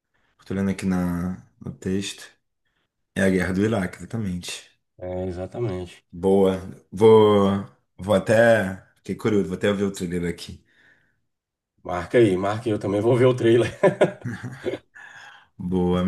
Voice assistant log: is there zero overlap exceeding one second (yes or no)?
yes